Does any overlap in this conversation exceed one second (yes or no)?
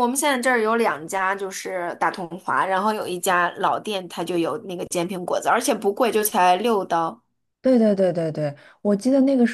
no